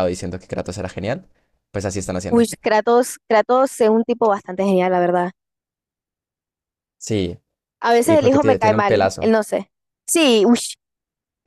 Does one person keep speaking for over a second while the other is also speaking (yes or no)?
yes